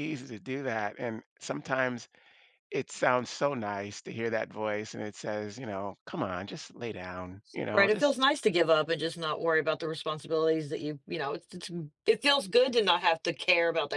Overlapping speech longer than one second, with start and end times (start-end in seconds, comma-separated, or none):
none